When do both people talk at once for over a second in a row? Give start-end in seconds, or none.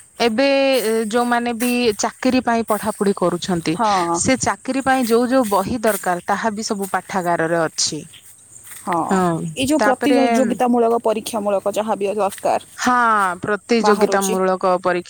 none